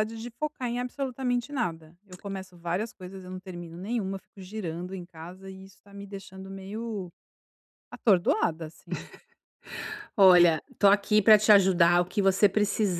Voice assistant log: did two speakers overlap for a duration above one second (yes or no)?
no